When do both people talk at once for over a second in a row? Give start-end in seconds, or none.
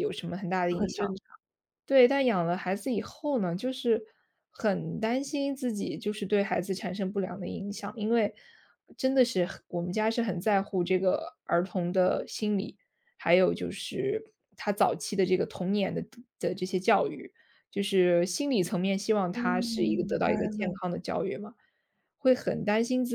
19.3-20.8